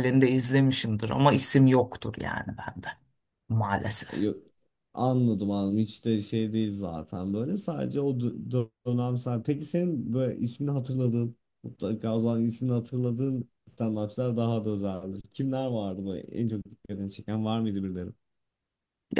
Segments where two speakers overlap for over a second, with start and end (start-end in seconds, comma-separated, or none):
none